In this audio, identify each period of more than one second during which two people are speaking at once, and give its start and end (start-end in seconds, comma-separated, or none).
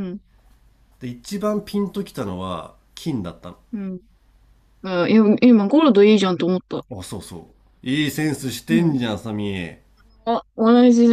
none